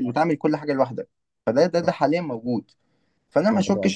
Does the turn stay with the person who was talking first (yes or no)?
yes